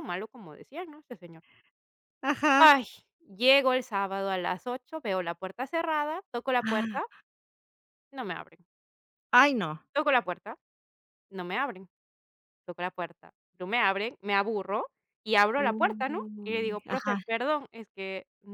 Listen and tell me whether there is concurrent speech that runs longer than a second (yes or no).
yes